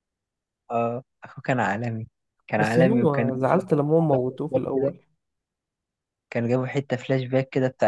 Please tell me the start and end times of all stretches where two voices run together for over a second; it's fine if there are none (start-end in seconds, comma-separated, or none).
2.6-4.9